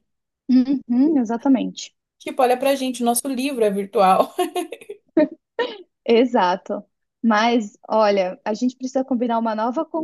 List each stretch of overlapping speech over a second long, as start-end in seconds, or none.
none